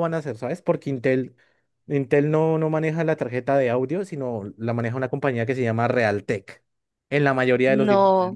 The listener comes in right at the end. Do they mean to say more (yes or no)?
yes